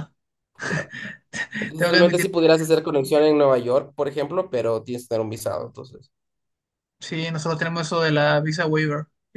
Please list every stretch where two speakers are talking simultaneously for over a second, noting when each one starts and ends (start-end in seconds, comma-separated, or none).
none